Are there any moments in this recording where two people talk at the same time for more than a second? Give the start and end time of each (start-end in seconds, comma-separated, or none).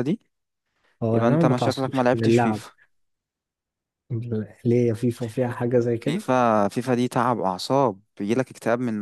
1.1-2.6